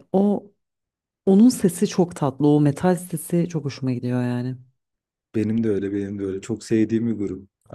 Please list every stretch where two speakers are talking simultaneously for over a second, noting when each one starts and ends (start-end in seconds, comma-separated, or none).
none